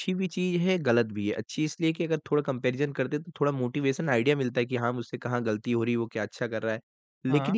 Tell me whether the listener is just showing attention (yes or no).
yes